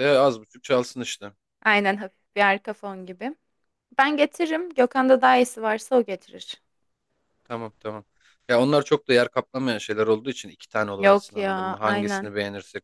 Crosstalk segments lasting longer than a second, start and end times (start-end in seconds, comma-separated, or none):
11.0-12.3